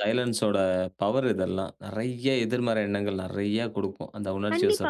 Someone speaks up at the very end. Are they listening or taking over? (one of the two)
taking over